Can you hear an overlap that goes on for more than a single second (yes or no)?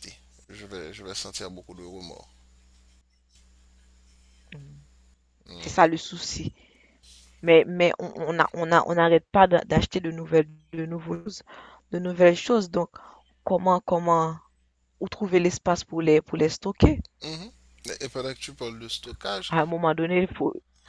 no